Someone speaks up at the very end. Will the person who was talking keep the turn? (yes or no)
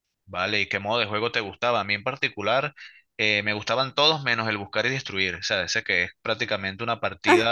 no